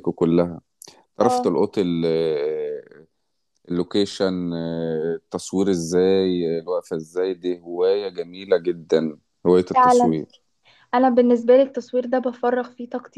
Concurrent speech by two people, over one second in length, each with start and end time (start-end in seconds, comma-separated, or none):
none